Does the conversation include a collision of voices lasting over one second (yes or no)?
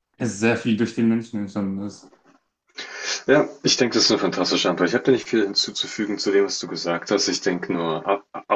no